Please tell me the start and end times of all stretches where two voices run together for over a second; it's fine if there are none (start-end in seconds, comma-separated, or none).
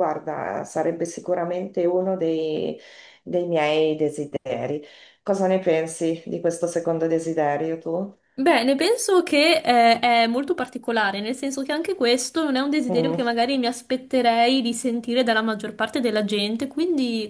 none